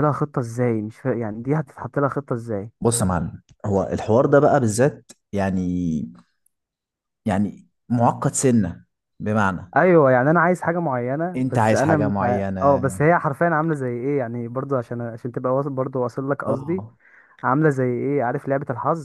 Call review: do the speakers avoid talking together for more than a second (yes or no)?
no